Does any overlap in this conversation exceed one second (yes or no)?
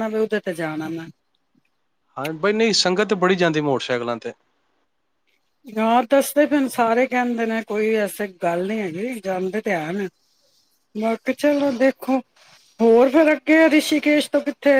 no